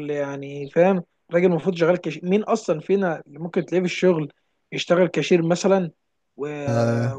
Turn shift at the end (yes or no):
no